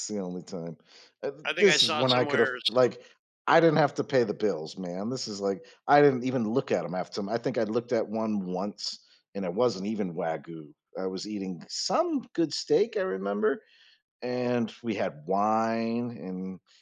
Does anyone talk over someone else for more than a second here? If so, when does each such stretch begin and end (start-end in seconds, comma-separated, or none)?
1.4-3.0